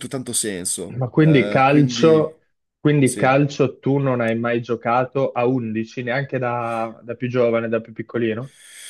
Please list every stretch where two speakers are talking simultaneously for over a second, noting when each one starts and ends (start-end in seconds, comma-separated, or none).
1.0-2.3